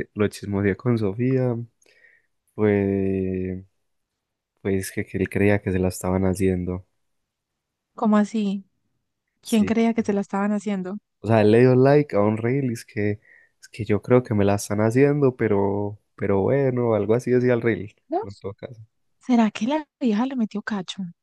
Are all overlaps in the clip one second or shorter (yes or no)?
yes